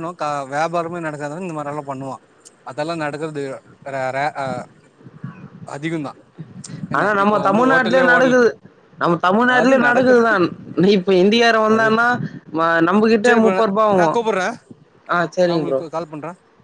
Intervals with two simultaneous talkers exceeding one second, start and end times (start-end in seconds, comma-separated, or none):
none